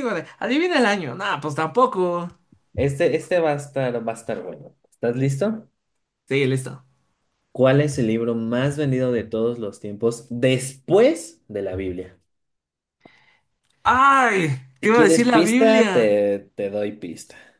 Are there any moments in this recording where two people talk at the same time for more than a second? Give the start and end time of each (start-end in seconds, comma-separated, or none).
14.8-16.2